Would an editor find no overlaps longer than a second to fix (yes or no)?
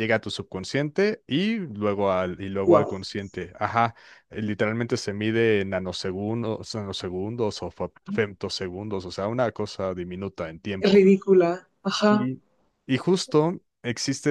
yes